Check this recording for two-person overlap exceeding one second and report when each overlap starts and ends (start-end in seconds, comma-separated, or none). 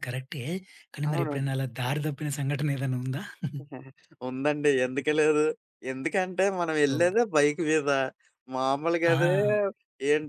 none